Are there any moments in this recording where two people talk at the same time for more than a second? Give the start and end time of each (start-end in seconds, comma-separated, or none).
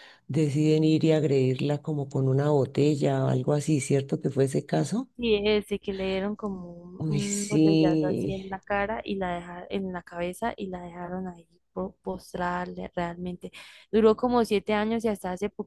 7.0-8.4